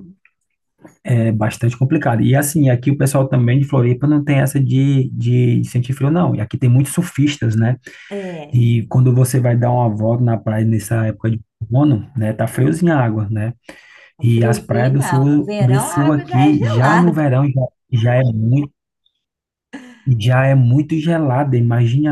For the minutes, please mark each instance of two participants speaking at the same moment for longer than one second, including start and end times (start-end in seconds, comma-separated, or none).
14.2-17.1